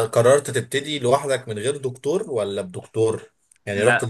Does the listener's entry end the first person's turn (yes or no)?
no